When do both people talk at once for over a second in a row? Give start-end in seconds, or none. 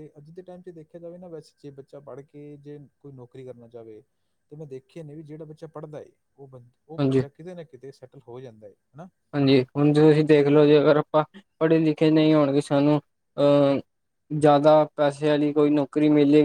none